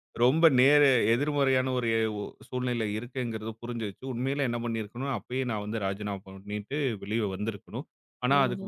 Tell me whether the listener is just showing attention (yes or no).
yes